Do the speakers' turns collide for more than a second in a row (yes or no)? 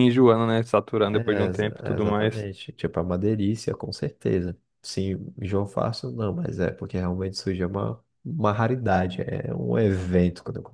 yes